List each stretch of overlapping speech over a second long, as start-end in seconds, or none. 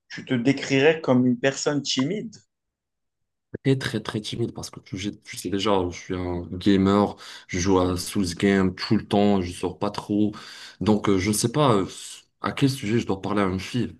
none